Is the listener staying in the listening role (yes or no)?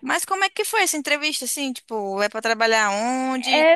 no